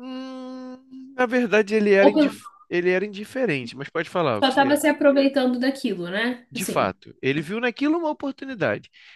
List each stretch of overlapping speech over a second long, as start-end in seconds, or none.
none